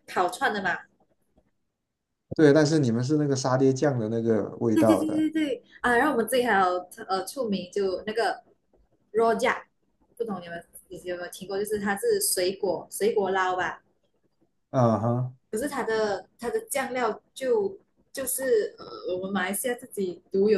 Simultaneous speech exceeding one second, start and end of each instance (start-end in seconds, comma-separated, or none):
none